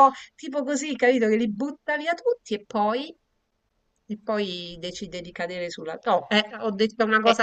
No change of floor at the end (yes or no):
no